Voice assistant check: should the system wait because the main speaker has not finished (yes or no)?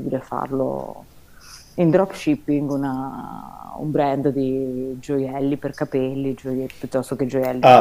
no